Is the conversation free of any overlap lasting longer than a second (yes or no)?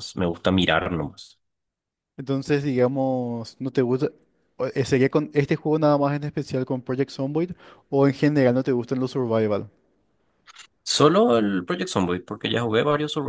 yes